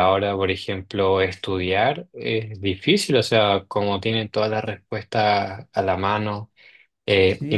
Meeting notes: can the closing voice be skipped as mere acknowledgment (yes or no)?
yes